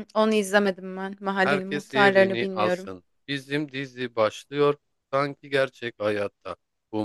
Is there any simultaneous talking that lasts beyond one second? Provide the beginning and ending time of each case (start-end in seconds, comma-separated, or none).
1.4-2.9